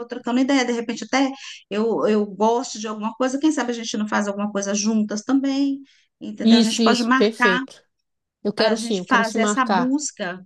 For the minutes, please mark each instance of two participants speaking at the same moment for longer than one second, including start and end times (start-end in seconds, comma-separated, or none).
6.4-7.6, 8.6-9.9